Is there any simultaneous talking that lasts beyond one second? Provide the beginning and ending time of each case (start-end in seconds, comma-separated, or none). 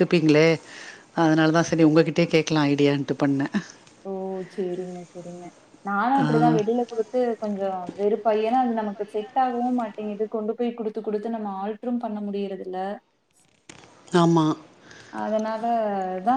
none